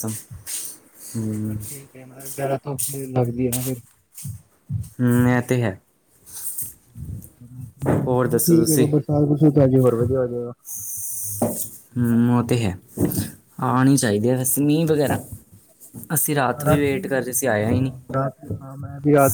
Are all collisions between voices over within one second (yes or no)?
no